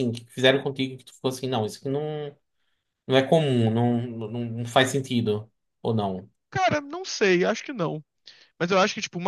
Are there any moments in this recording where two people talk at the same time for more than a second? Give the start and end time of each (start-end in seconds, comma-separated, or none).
none